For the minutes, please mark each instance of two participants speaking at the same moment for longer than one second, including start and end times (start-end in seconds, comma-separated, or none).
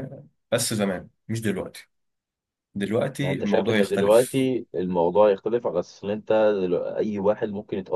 3.2-4.4